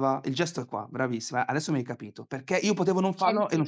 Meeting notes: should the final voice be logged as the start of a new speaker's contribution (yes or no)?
no